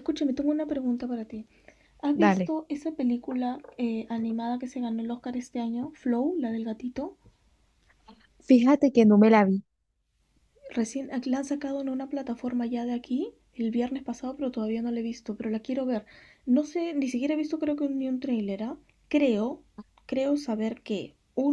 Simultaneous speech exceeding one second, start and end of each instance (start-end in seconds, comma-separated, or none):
none